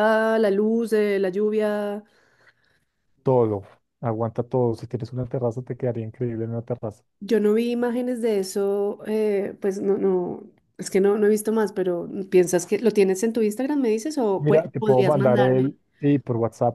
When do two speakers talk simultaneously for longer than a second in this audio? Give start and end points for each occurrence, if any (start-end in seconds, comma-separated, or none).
14.4-15.8